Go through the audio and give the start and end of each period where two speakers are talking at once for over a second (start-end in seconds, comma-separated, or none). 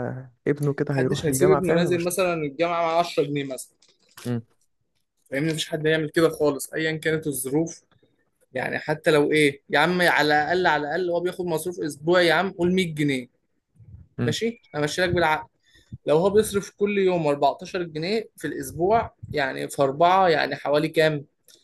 0.9-2.1